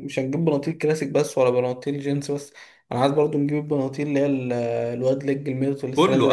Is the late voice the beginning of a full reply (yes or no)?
yes